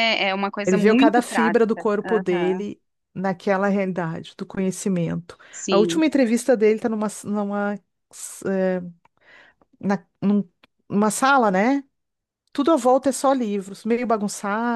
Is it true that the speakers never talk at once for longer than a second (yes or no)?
no